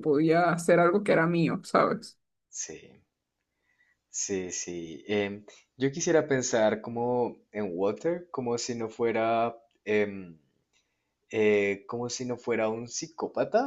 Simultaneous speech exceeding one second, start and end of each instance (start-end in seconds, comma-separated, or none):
none